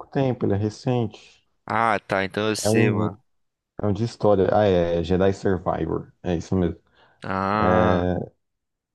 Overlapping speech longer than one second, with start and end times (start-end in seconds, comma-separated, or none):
none